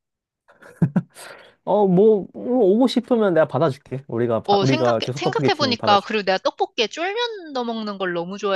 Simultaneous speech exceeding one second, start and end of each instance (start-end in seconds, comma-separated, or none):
4.5-6.2